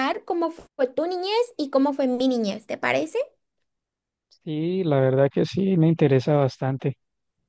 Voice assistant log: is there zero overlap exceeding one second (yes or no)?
yes